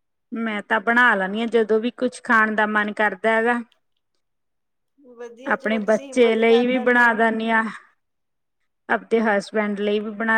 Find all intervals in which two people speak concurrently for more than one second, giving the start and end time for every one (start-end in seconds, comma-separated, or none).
5.5-7.2